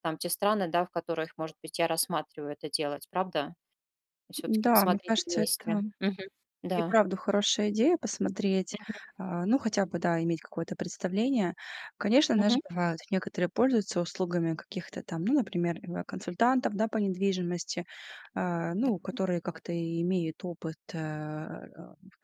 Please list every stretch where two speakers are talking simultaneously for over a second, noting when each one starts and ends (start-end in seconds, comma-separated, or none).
4.5-5.8